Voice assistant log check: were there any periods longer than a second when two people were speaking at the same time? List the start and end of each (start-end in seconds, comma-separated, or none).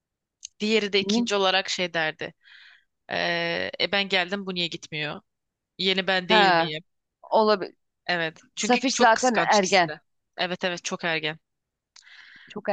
8.6-9.9